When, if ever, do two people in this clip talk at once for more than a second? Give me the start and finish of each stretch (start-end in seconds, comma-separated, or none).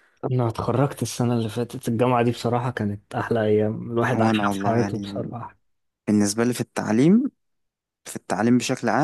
4.1-5.3